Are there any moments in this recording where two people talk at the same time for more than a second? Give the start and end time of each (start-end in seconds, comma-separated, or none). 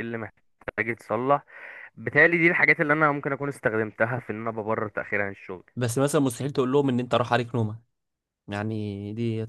none